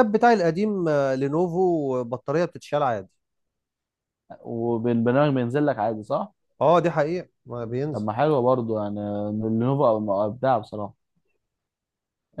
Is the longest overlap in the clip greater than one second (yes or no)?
no